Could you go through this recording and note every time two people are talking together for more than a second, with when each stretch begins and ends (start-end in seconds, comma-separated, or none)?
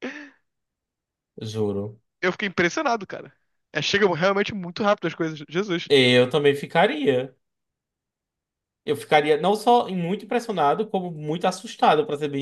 none